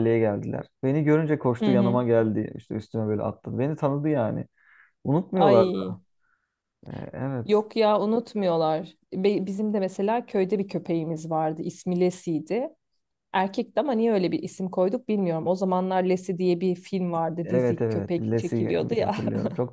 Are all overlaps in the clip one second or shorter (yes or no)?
no